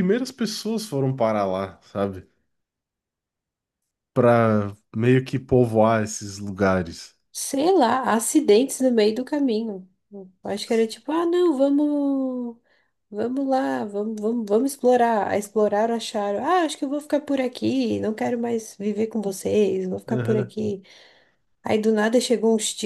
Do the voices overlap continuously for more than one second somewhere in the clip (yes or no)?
no